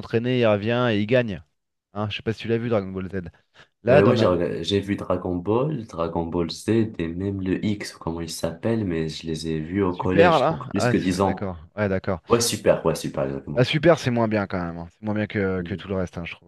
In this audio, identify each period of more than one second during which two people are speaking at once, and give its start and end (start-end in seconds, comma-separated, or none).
9.9-11.5